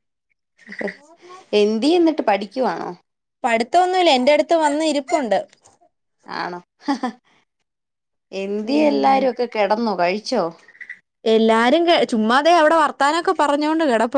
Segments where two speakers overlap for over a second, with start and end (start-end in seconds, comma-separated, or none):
none